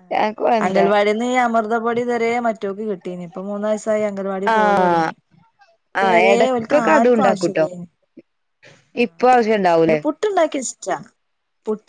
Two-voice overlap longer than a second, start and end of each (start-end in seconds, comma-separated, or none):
6.0-7.7